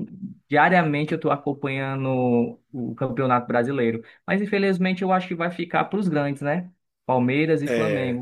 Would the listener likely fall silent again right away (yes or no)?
yes